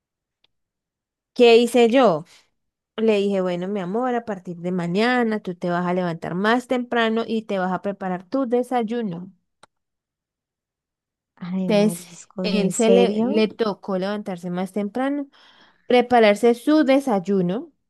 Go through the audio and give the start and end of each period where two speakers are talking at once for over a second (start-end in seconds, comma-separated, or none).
11.7-13.4